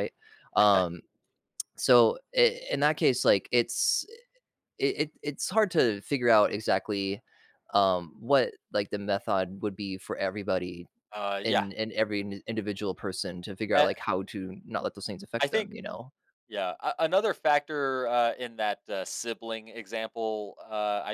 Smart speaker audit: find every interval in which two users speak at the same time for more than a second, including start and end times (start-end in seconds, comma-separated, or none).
none